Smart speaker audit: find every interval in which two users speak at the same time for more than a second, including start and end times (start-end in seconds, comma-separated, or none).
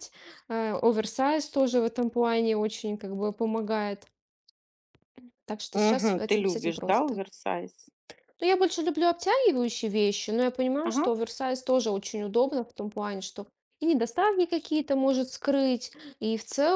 5.7-7.2